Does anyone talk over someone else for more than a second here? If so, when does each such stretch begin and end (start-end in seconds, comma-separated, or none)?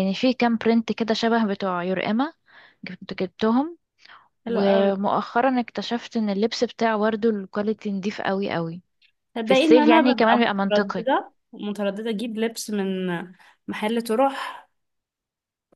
9.4-11.0